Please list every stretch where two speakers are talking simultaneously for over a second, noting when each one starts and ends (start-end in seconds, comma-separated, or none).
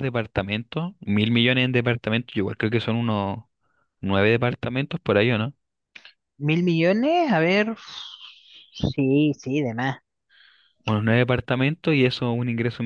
none